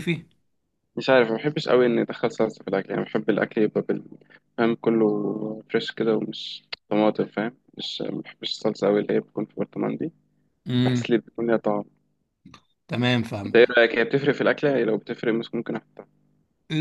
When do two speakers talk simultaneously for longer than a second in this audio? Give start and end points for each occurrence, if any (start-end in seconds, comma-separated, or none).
none